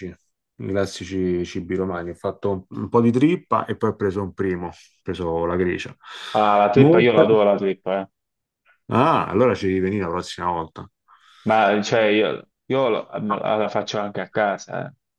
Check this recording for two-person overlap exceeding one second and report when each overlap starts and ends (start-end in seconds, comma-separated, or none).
none